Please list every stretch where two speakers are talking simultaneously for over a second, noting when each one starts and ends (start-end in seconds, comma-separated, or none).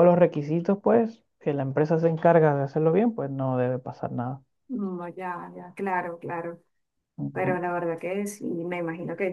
none